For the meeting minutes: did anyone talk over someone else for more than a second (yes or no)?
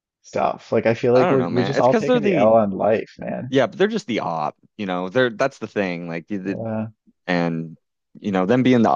yes